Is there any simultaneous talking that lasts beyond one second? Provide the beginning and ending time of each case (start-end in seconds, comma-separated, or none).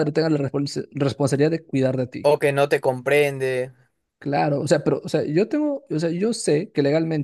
none